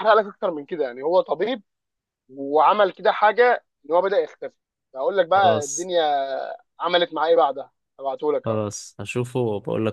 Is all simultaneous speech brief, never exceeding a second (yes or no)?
yes